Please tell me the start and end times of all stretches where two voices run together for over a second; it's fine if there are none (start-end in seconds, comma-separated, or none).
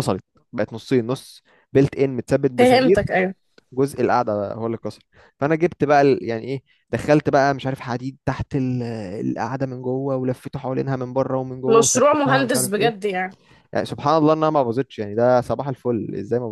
11.7-13.1